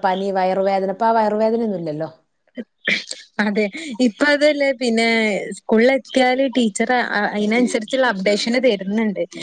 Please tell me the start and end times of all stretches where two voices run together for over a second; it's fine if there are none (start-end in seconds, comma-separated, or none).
none